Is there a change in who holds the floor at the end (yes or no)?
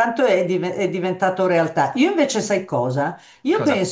no